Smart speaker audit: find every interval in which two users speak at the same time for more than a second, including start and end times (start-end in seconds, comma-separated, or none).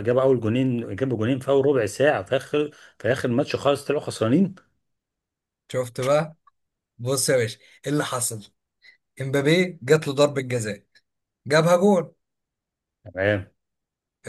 none